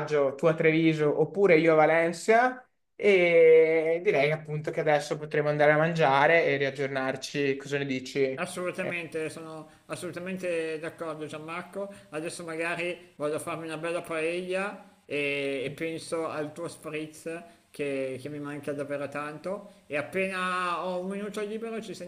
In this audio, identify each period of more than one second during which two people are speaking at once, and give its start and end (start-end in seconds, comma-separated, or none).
none